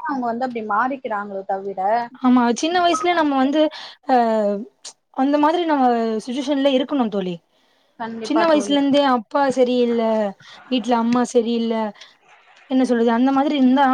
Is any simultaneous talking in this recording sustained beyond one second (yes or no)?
no